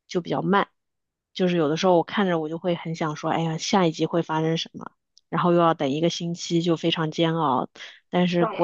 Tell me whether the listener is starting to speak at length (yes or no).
no